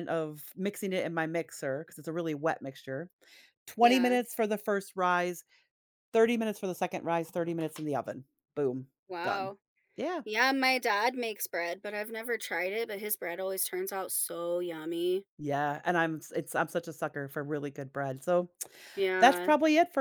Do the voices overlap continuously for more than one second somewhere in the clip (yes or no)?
no